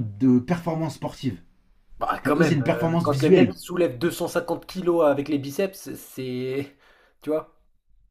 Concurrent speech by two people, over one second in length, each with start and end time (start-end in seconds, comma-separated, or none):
2.2-3.5